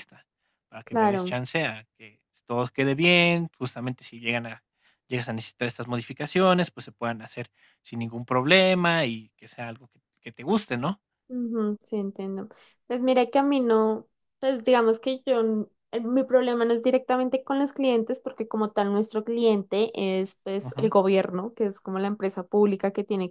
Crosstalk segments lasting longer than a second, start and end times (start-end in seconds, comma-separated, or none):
none